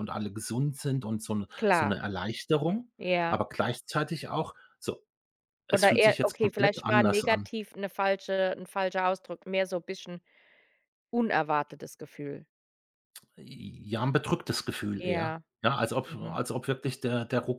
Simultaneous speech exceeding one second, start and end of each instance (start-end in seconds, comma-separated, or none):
5.7-7.5